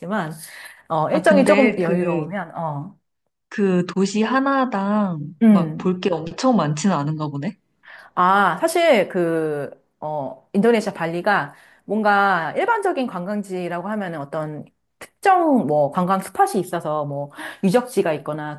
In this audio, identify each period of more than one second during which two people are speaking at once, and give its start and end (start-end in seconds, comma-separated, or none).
1.1-2.3